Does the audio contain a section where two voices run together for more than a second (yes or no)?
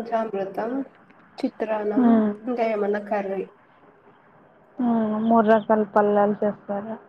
no